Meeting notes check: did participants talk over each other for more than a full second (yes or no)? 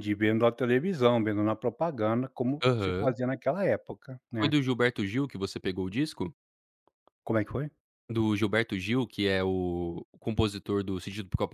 no